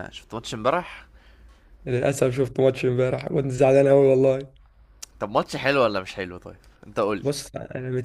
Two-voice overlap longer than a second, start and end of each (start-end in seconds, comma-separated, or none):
none